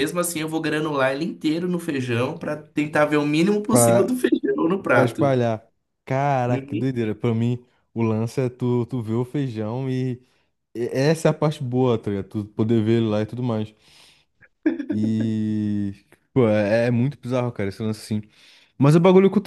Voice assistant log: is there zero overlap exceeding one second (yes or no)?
yes